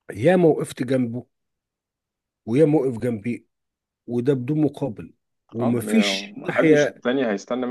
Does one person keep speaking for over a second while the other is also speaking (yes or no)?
yes